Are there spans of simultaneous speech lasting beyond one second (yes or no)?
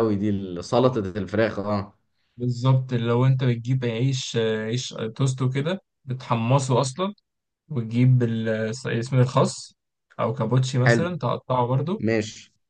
no